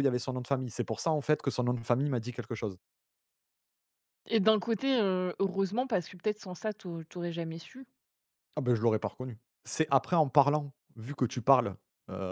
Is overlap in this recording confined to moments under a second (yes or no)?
yes